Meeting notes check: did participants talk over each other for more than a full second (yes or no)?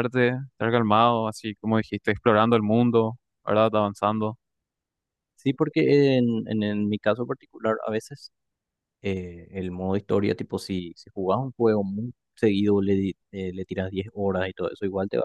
no